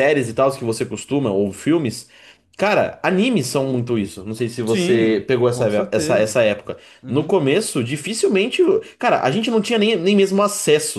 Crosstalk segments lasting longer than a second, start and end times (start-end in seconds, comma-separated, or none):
4.7-6.4